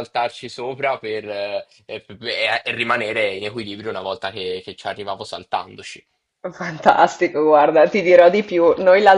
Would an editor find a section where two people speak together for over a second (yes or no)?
no